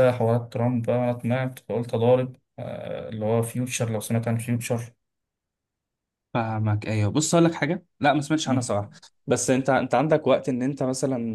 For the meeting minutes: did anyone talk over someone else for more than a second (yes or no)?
no